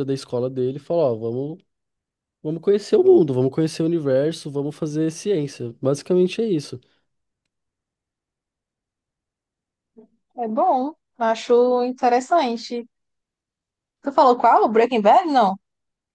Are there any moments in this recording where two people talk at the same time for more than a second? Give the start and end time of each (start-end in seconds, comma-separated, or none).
none